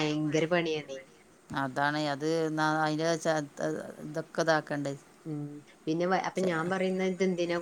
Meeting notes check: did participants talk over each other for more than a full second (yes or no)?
no